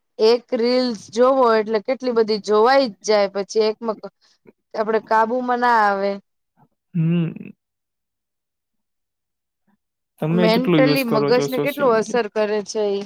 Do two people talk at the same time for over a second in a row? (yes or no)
yes